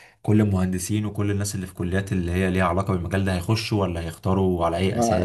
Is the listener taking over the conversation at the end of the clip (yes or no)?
yes